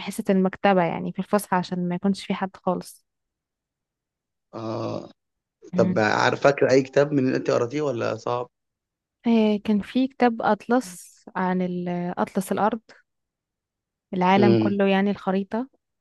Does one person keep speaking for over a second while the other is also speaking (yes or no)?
no